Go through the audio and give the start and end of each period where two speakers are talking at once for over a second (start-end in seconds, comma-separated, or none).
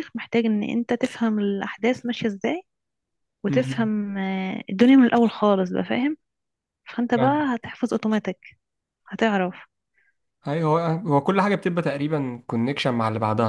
none